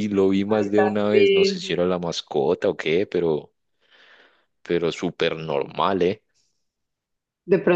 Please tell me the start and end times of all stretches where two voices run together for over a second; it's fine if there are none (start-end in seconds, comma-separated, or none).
0.6-1.8